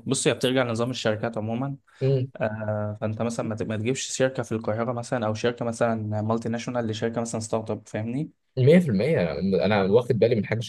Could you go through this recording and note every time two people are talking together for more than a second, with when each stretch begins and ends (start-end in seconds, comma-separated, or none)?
none